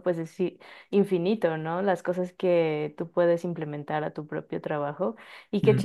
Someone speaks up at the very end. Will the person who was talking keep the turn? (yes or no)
yes